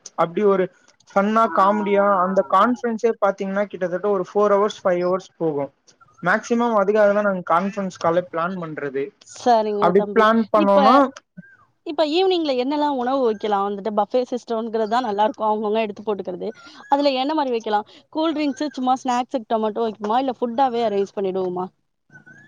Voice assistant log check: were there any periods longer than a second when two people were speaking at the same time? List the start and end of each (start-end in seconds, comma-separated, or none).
none